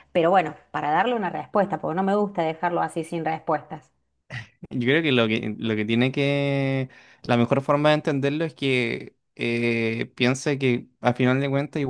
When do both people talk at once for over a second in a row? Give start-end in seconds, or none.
none